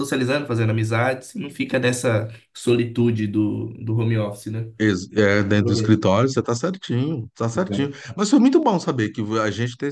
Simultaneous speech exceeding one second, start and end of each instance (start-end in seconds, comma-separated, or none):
none